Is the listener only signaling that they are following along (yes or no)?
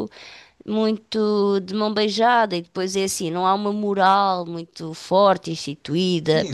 no